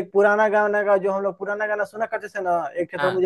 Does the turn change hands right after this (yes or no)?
no